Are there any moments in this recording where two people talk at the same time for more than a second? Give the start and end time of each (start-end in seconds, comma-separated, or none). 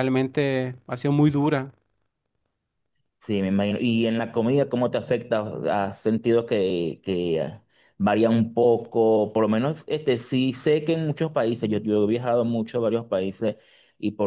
none